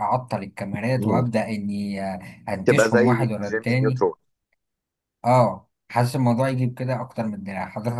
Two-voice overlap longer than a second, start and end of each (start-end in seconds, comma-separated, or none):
2.6-4.0